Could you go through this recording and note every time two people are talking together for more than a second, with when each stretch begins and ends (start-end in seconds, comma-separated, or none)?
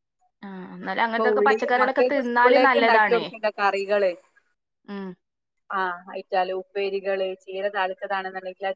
1.1-3.2